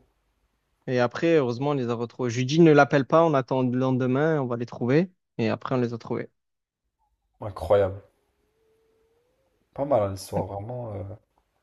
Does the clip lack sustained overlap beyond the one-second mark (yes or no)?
yes